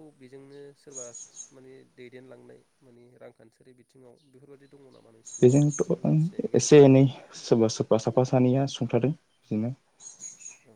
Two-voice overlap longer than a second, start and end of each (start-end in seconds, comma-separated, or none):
5.4-6.9